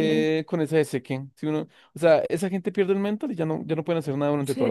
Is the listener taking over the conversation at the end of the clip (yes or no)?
yes